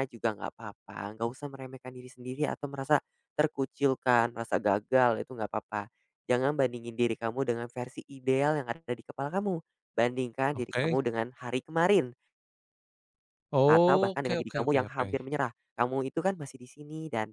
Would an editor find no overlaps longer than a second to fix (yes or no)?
no